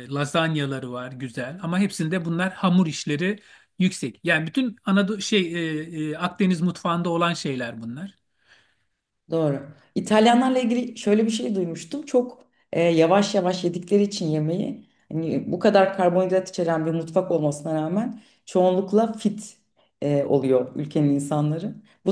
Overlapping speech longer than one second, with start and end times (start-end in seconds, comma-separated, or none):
none